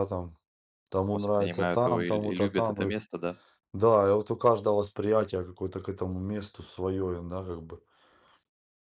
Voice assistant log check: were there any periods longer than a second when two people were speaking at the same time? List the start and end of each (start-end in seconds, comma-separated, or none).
1.1-2.9